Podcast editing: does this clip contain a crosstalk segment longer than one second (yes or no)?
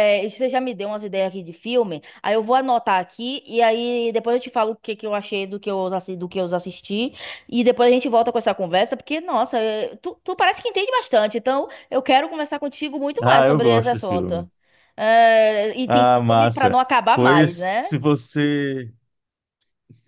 yes